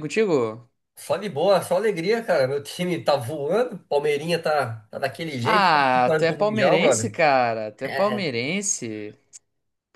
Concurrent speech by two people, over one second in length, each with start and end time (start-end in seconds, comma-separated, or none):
5.4-7.1